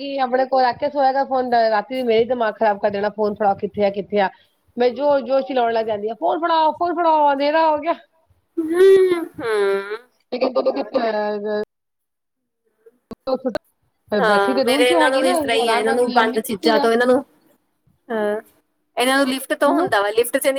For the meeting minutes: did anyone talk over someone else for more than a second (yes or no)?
yes